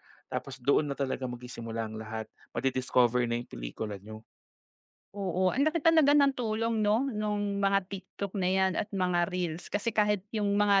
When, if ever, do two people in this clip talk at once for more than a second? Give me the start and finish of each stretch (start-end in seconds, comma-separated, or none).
none